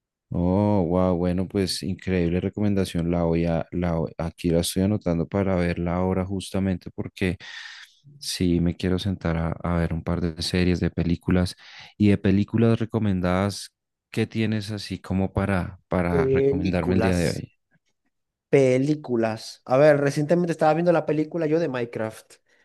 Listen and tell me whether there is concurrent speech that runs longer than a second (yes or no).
yes